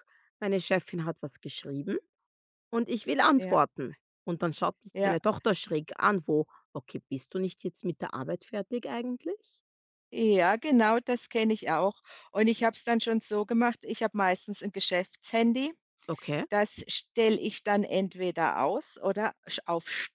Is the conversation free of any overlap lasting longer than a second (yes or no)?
yes